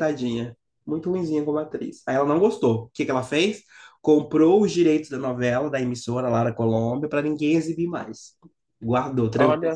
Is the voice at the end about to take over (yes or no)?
no